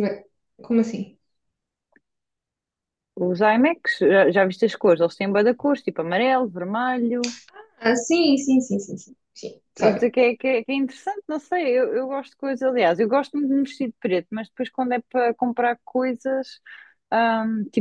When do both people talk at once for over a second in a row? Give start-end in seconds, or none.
none